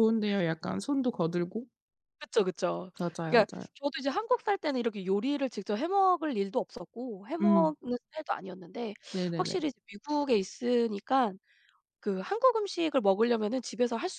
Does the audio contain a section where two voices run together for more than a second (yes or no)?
no